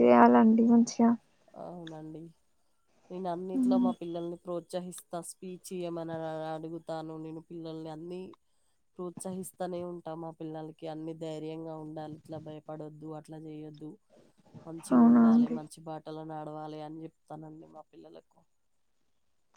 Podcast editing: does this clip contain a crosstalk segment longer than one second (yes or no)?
no